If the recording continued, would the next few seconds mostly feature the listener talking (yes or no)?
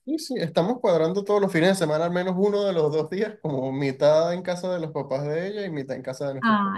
yes